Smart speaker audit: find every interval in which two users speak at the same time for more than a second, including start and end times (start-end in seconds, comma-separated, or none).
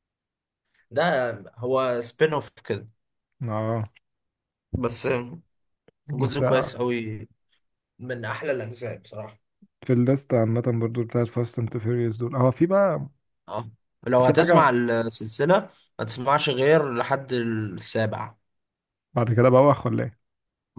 none